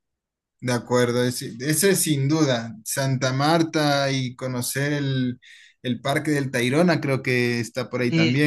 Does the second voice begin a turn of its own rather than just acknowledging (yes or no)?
yes